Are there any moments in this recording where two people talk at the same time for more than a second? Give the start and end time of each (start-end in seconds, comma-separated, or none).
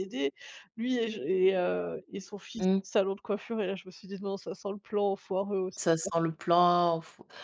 none